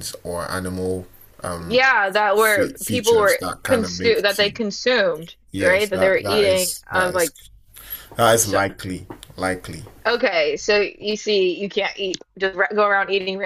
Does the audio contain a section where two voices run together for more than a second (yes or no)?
yes